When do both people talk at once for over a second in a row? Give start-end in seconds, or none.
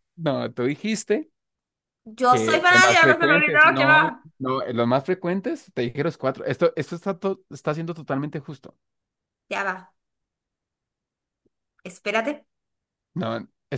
2.3-4.3